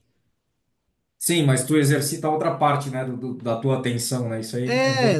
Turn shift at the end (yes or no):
yes